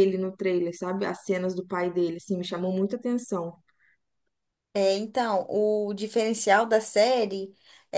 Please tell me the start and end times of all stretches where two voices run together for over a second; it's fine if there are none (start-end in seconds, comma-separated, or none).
none